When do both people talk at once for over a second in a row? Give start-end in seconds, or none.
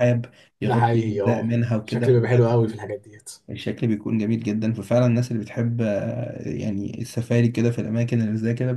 0.6-2.8